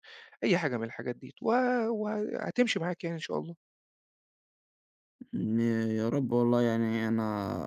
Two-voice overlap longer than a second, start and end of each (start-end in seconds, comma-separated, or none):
none